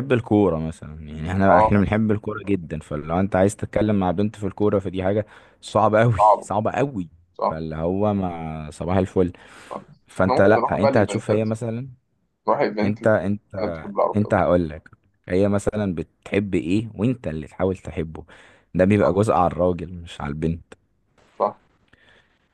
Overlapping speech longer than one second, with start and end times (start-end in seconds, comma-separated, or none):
10.2-11.4